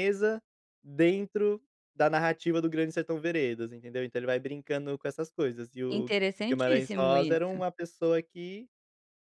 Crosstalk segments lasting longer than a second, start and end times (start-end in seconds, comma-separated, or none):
5.9-7.6